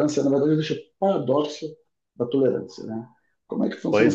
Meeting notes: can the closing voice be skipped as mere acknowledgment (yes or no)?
yes